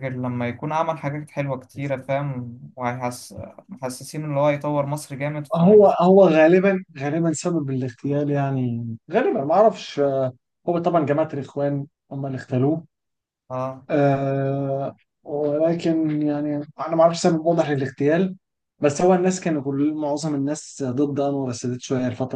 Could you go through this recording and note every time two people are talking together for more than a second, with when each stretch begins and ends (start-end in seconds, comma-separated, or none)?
none